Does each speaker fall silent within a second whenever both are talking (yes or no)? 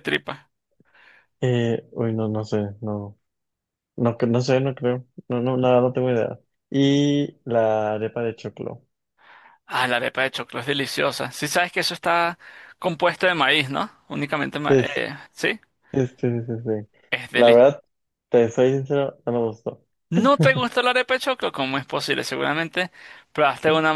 yes